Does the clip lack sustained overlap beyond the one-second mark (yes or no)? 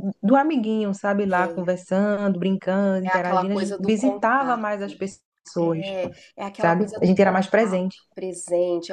no